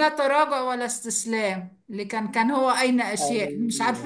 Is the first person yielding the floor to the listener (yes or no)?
no